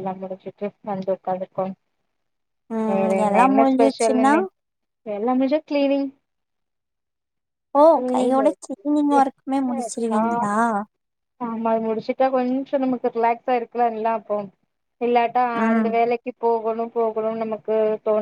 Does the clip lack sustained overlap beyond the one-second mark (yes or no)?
no